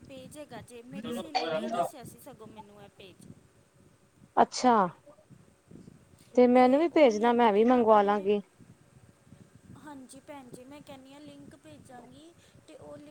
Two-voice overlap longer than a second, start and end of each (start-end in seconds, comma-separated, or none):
6.9-8.2